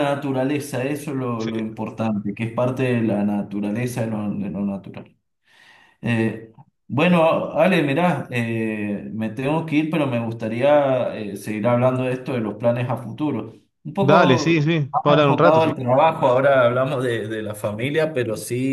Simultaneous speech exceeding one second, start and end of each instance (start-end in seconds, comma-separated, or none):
14.0-15.7